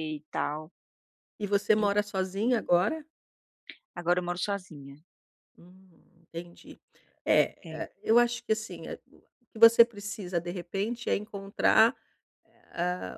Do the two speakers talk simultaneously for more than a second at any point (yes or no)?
no